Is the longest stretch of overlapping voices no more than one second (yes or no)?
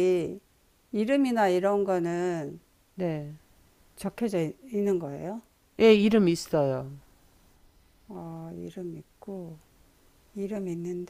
yes